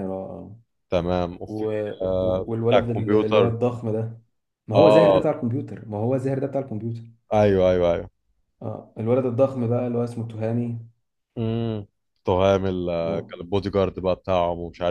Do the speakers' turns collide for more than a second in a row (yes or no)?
yes